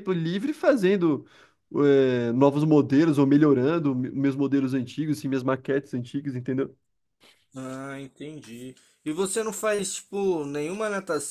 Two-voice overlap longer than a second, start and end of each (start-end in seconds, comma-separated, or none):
none